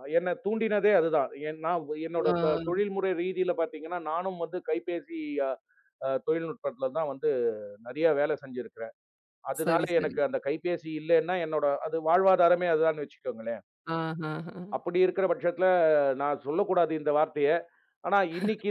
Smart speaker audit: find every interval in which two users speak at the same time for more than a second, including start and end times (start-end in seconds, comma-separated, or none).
none